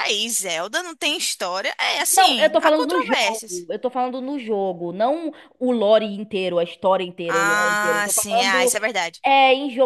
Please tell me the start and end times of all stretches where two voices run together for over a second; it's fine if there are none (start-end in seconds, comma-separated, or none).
2.1-3.6, 7.3-8.7